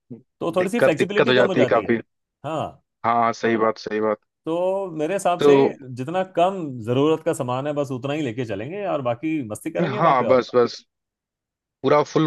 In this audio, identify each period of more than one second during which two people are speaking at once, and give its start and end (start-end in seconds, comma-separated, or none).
0.6-1.9